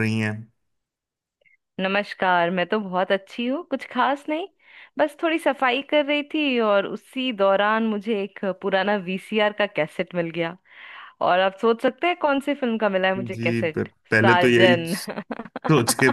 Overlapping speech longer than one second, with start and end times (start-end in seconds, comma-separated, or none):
13.2-14.8